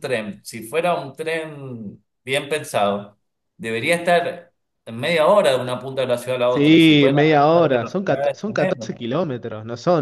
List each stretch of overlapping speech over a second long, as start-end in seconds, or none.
6.5-8.9